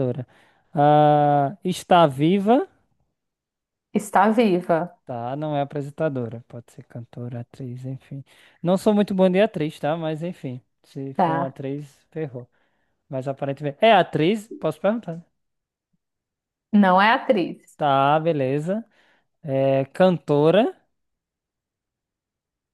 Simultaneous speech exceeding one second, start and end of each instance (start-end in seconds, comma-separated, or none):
none